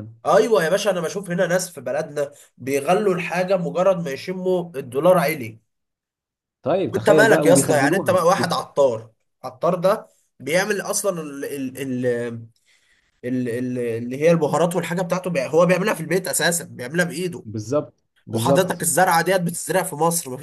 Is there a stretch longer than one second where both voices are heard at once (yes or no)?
yes